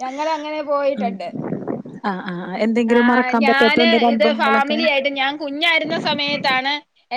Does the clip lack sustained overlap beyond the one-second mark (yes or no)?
no